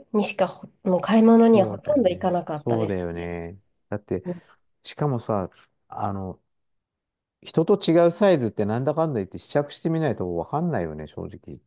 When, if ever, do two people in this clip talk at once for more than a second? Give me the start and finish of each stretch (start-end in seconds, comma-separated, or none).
1.3-3.4